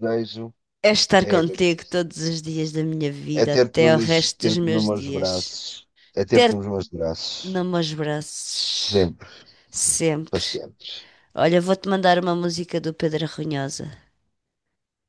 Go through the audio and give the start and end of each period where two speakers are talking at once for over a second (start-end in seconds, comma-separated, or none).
3.4-5.6